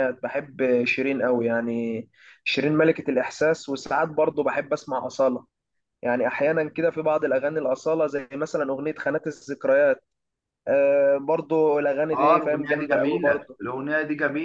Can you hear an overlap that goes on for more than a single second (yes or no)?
yes